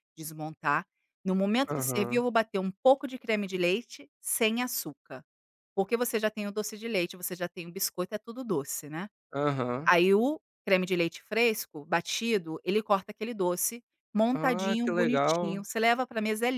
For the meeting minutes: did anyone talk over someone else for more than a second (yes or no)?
yes